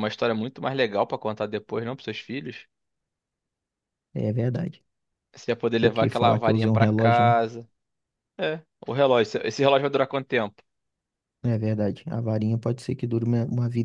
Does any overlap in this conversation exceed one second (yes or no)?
yes